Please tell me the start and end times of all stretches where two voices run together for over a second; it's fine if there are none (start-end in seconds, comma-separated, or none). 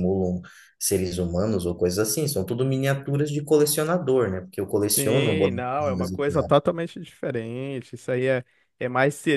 4.9-6.5